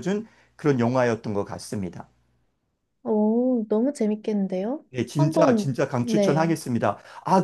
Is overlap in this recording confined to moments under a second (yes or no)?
no